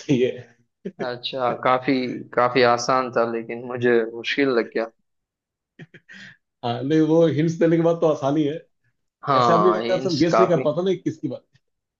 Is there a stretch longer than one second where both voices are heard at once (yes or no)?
yes